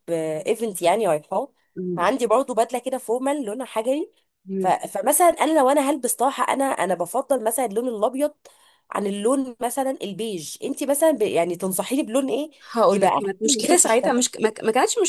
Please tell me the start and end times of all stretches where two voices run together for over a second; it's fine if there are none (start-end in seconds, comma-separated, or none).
12.9-14.2